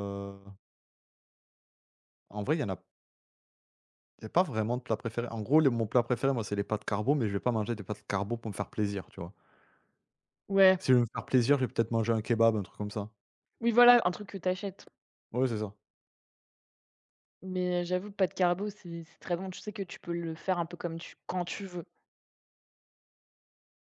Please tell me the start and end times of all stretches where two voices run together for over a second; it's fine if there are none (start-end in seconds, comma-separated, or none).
none